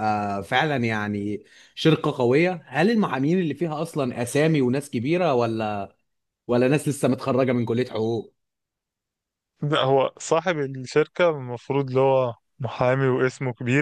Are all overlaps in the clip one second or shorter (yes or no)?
yes